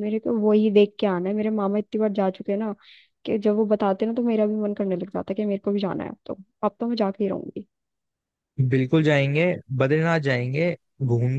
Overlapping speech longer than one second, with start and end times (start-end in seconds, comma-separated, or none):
none